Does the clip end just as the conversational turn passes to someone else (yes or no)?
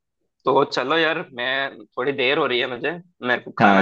yes